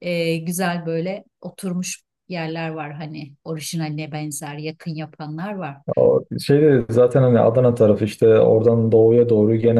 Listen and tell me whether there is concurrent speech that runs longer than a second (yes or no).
no